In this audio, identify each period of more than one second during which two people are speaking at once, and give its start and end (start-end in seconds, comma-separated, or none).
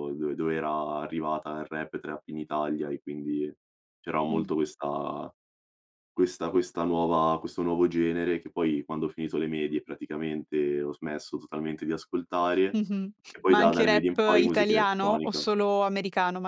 13.5-15.4